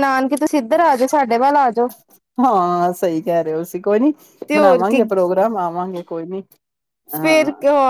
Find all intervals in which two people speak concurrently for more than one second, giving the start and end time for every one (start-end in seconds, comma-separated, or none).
none